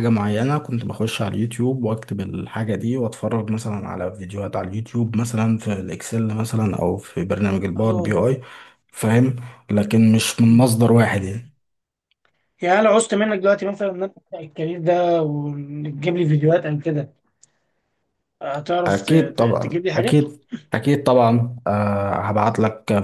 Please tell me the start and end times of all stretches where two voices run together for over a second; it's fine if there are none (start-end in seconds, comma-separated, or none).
18.9-20.2